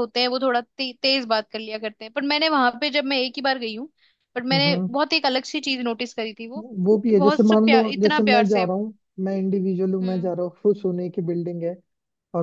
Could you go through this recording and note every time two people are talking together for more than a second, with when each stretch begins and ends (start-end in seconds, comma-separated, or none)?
7.0-8.7